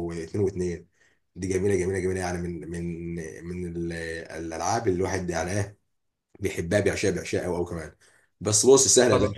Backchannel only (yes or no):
yes